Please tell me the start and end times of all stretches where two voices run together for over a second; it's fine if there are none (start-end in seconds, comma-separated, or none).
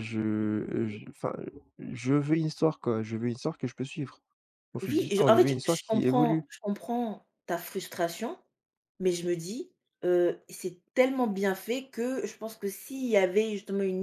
4.8-6.5